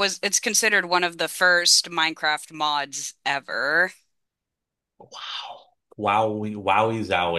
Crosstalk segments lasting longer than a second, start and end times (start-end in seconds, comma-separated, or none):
none